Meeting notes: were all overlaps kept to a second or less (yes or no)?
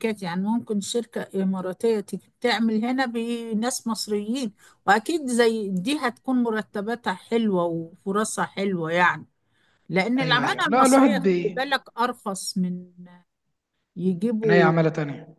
no